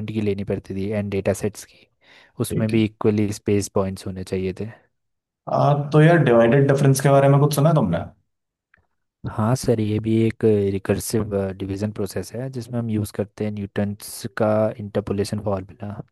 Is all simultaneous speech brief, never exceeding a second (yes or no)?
yes